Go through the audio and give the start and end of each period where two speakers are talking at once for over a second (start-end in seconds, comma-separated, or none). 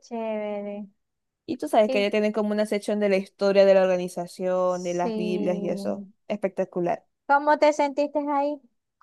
4.7-6.1